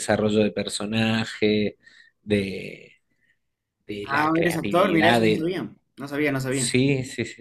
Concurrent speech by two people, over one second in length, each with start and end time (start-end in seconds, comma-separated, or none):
4.0-5.5